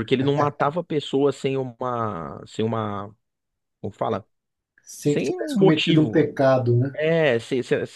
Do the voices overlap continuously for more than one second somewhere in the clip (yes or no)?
yes